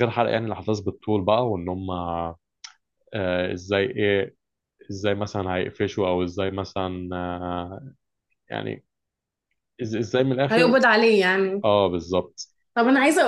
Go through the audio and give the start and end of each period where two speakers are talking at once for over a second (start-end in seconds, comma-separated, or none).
none